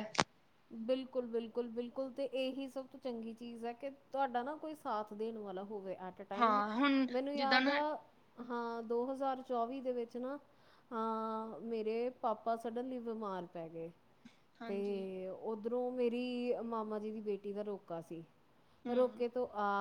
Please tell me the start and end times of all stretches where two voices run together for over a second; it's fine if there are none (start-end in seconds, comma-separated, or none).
6.4-7.8